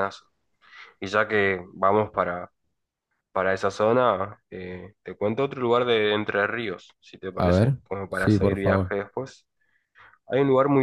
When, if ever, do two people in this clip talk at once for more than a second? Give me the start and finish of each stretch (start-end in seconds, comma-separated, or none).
7.4-8.9